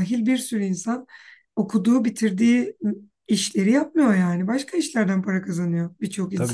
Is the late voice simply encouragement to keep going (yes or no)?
no